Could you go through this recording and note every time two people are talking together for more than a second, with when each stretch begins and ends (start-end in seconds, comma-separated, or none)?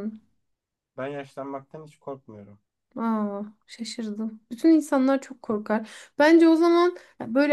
none